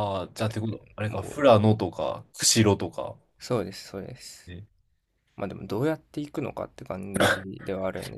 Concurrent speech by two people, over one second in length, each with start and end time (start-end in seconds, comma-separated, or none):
none